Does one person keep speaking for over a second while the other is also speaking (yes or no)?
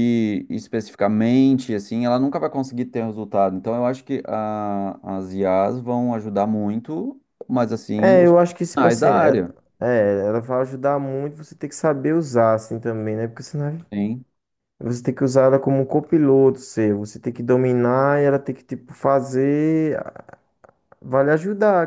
yes